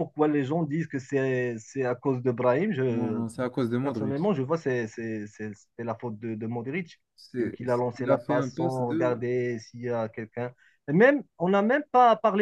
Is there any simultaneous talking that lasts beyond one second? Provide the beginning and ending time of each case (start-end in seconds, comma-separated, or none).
7.4-9.3